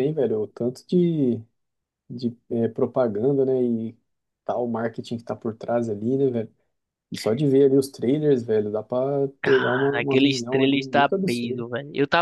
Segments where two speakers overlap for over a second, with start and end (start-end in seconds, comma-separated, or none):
9.4-11.6